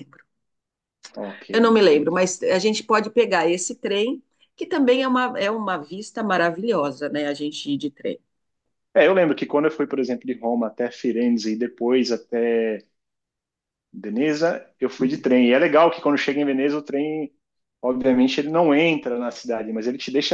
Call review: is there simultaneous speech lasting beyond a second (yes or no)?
no